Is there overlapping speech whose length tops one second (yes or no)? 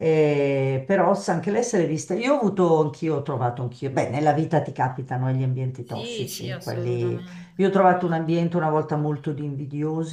yes